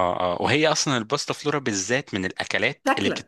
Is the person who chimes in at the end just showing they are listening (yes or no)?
yes